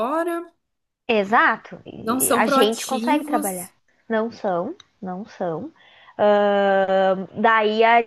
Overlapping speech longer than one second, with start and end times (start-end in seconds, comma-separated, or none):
2.0-3.7